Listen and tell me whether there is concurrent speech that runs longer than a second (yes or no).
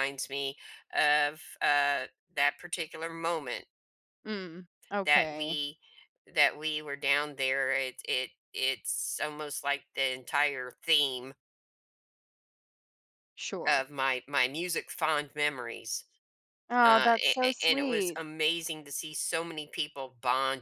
yes